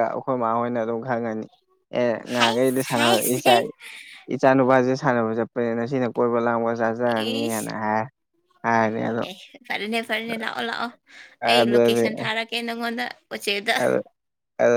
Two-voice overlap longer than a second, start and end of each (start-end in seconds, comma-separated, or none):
2.4-3.7